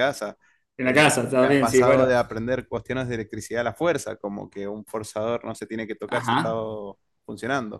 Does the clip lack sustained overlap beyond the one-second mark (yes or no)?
no